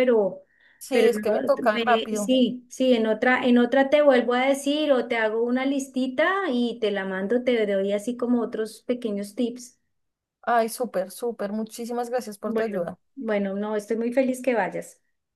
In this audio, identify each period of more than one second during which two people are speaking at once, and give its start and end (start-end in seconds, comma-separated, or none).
0.9-2.3